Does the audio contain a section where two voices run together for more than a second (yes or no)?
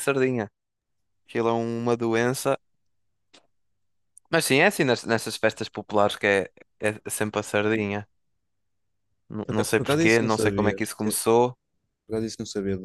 yes